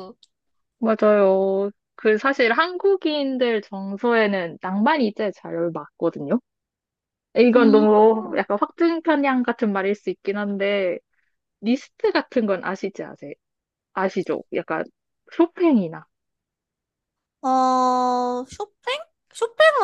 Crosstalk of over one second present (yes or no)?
no